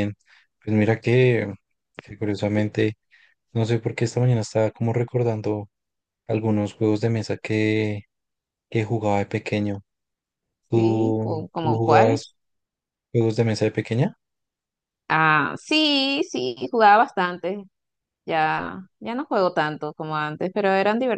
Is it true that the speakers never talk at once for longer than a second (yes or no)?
no